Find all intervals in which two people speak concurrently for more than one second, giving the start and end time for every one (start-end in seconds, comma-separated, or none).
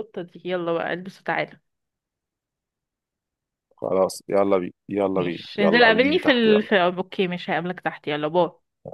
5.1-6.8